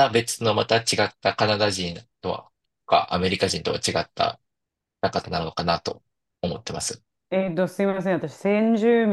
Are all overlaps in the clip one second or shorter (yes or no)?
yes